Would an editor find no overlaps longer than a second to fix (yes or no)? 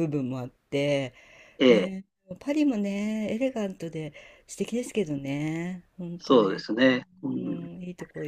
yes